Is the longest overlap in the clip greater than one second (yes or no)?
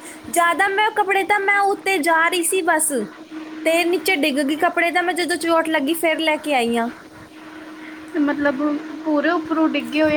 no